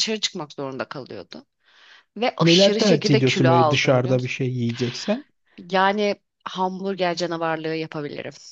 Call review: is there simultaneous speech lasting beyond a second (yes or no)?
yes